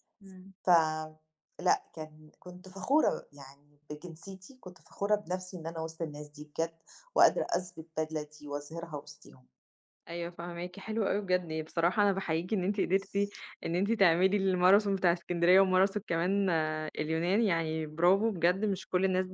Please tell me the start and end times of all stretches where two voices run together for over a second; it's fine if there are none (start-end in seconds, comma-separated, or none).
none